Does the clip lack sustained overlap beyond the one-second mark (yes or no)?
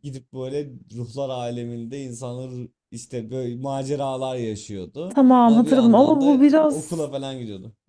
no